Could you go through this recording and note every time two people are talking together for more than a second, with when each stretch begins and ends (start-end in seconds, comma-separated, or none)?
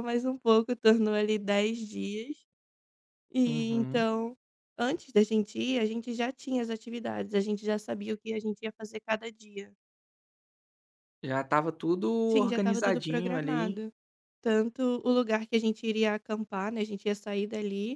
12.3-13.8